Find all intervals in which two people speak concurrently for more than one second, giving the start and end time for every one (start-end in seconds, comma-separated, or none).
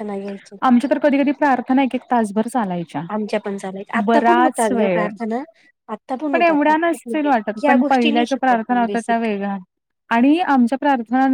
6.3-9.3